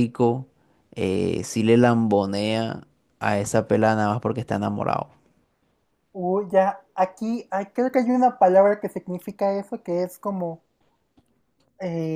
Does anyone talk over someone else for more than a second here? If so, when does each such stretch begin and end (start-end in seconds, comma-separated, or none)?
none